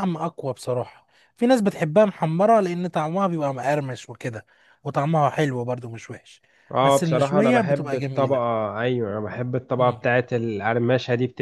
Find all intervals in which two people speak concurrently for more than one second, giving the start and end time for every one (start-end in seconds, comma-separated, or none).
6.8-8.4